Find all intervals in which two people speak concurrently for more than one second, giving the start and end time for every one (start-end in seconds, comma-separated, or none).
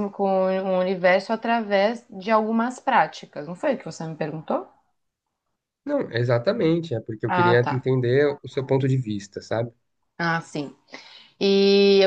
none